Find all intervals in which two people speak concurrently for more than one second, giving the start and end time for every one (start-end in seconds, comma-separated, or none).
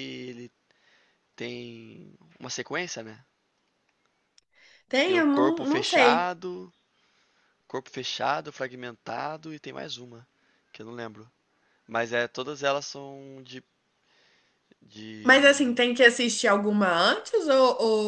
5.0-6.3